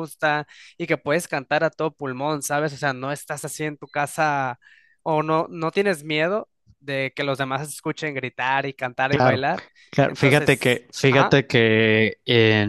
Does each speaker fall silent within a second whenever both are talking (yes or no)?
no